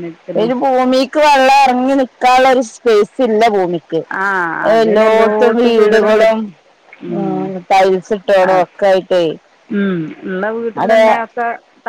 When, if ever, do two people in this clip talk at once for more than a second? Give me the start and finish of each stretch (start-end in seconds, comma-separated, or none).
4.8-6.4